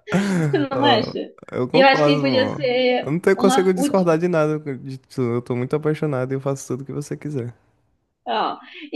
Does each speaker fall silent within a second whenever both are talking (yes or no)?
no